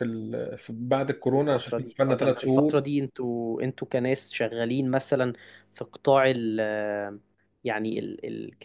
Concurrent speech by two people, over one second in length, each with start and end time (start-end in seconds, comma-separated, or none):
1.4-2.8